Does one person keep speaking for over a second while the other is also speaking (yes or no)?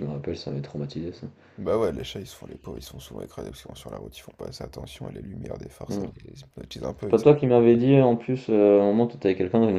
no